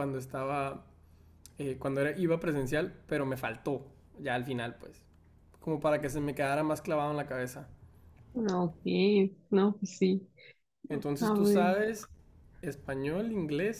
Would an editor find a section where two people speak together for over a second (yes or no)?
no